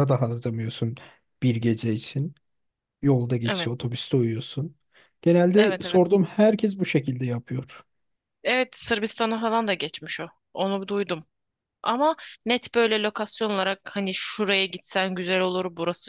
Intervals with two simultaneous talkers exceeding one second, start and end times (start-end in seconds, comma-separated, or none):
none